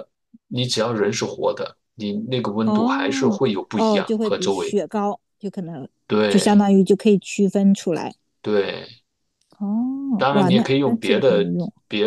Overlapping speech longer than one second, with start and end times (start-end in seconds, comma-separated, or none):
2.6-4.8, 10.2-11.5